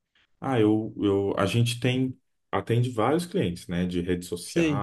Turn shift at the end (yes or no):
no